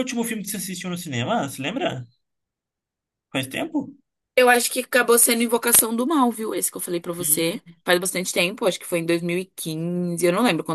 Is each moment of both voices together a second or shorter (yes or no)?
yes